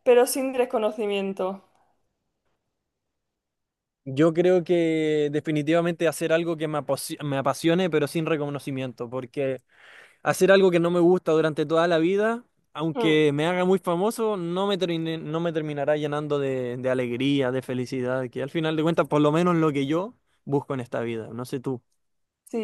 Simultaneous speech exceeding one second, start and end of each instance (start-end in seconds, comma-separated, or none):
none